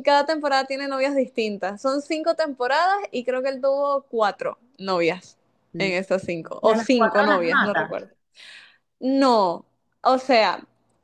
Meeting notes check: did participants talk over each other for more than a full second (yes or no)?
yes